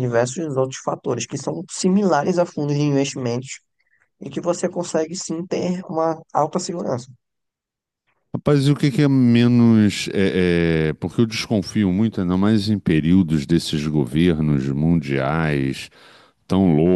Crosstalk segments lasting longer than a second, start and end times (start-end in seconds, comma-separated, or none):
none